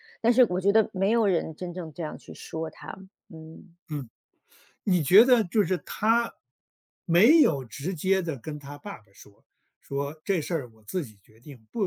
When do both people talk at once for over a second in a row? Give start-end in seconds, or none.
none